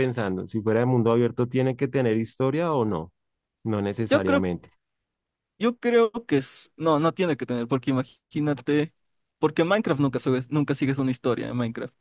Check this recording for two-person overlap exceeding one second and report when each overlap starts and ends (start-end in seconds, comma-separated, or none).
none